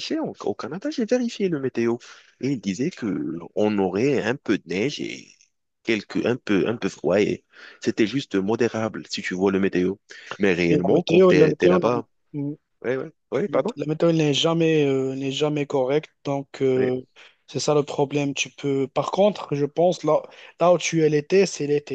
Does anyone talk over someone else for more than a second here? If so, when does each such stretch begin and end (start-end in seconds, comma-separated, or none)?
10.7-11.9